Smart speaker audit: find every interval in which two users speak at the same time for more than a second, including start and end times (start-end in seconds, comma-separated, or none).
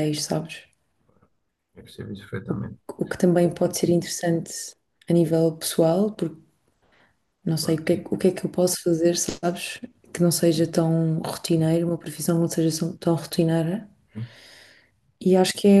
none